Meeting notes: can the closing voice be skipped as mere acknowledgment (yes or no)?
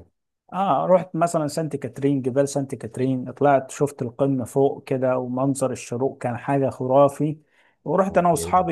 yes